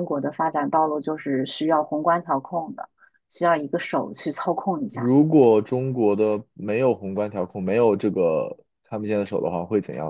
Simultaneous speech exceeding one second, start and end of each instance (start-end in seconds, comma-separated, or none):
none